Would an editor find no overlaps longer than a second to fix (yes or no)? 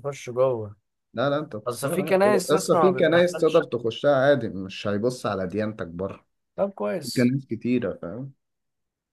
no